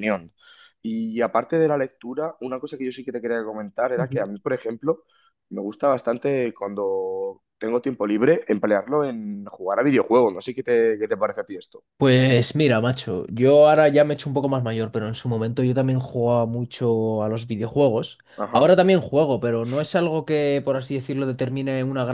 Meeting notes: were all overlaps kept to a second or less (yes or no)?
yes